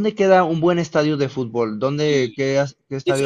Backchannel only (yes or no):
no